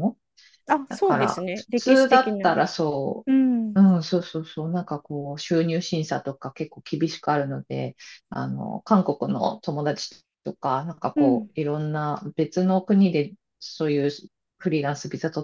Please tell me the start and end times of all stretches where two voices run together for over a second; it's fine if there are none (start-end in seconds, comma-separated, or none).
0.9-2.6